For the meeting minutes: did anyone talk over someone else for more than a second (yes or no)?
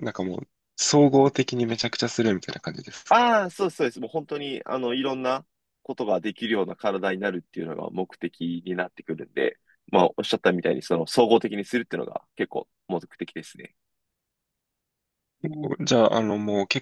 no